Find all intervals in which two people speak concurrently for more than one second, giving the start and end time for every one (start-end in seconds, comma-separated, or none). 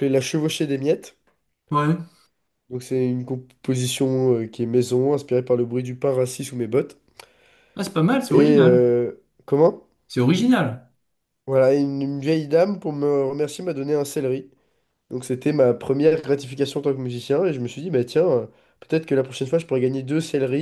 none